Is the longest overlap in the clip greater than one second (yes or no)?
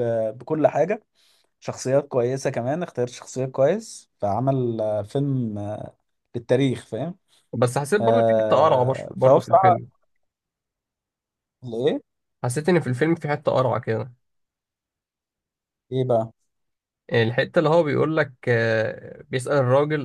yes